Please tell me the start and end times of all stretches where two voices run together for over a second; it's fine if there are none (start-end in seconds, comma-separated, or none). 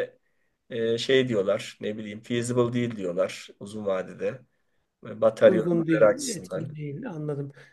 5.4-6.7